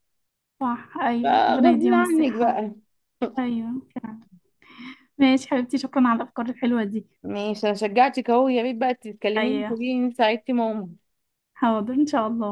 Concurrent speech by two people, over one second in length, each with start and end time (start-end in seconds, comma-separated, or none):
1.2-2.6